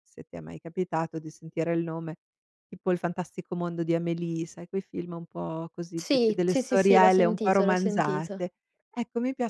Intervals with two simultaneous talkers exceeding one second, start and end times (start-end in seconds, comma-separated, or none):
5.9-8.4